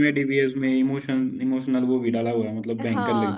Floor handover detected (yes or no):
yes